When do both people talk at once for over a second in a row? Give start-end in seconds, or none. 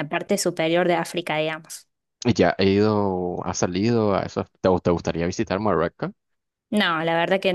none